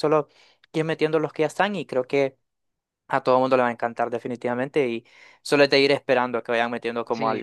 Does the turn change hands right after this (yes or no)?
yes